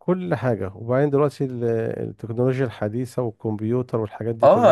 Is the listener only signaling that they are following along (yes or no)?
no